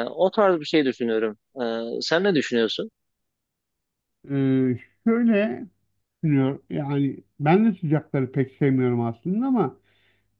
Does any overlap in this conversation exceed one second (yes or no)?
no